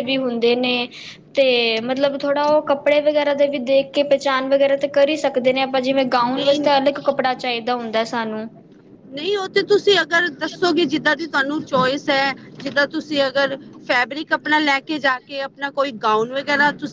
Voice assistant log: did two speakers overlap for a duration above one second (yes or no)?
no